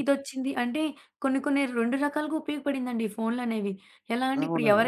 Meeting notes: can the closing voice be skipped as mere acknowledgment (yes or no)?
yes